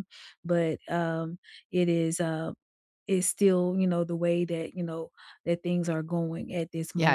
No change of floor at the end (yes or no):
no